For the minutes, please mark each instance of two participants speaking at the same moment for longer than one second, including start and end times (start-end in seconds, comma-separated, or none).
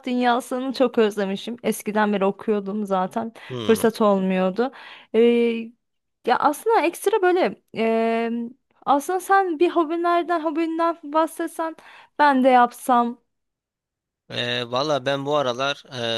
none